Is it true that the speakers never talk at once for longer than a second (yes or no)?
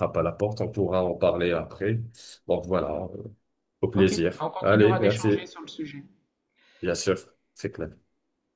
no